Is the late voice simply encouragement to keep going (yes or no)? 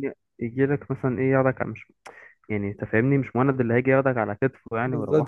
no